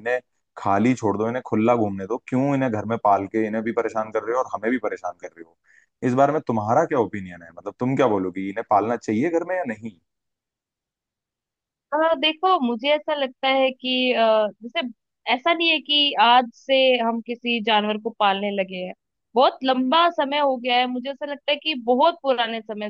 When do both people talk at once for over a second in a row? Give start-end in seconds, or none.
none